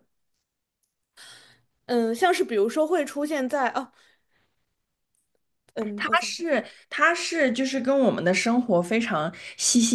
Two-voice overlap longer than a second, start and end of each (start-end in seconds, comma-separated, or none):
none